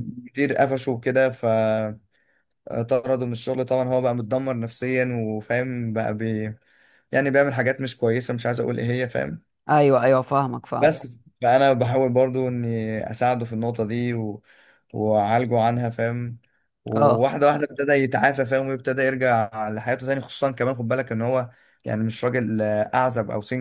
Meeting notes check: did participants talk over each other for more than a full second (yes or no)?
no